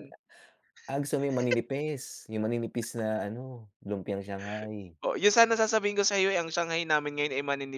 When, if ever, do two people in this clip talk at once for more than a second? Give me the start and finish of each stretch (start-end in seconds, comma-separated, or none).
none